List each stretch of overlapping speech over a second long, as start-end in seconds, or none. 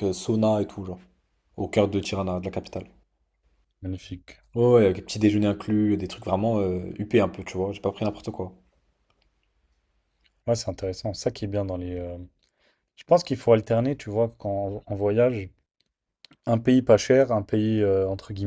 none